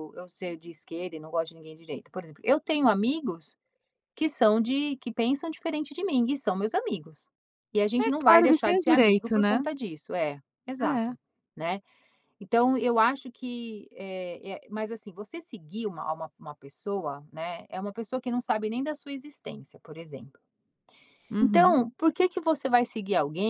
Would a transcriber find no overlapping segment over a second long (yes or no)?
no